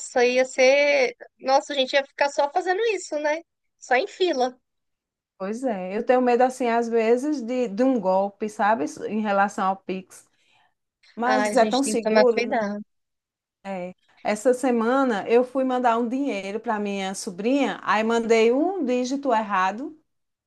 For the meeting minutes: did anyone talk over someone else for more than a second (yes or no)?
yes